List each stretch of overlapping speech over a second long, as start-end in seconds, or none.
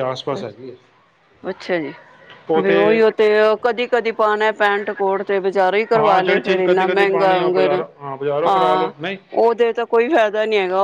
6.0-7.3